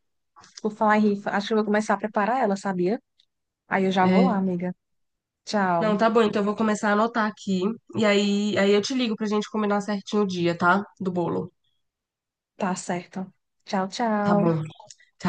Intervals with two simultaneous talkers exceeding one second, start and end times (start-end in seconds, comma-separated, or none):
none